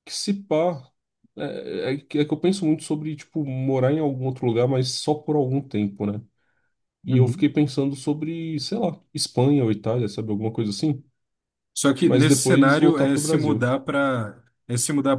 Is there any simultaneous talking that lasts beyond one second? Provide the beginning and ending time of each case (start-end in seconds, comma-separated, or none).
12.0-13.6